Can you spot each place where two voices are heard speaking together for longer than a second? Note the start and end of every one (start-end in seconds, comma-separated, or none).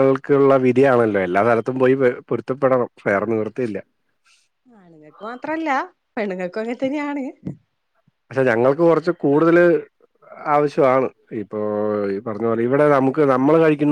none